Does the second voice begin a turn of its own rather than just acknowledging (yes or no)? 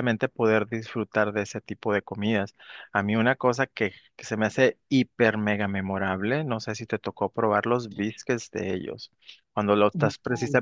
no